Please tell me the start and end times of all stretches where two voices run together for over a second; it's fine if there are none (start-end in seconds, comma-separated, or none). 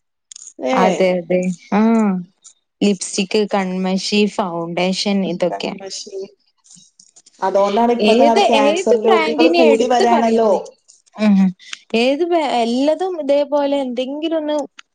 8.1-10.5